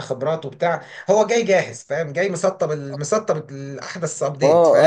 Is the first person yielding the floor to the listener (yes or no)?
yes